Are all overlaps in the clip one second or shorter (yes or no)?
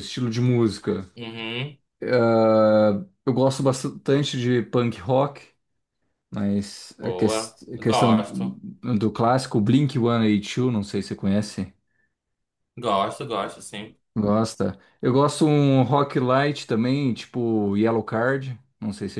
no